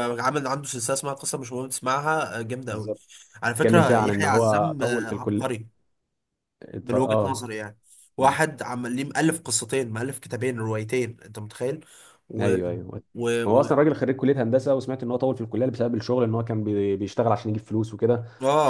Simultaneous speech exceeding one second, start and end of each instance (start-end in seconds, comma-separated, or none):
3.5-5.6